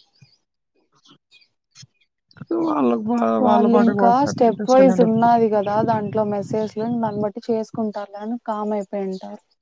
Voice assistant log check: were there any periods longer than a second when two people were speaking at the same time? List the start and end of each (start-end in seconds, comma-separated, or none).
3.4-5.3